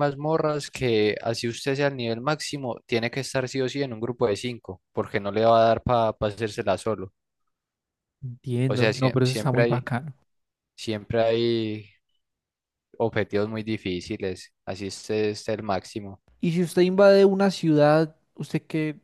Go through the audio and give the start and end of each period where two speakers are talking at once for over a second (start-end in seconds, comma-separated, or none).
8.7-9.9